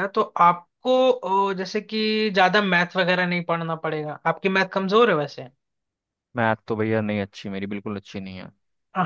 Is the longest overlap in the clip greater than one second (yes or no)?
no